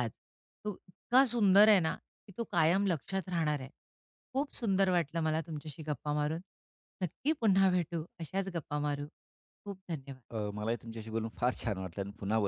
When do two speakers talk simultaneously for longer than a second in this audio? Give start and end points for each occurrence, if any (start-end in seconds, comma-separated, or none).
none